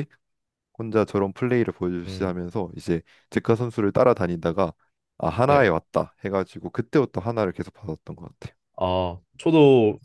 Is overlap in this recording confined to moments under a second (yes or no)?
yes